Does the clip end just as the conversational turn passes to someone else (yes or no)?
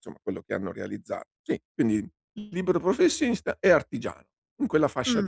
yes